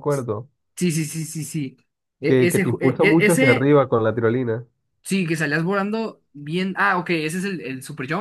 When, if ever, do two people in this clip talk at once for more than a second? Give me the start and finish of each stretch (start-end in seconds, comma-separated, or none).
2.3-3.7